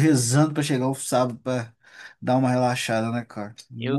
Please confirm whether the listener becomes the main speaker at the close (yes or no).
yes